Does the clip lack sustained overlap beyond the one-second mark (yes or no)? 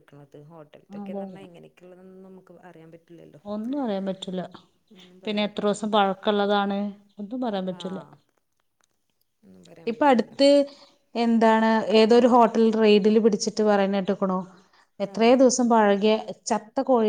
yes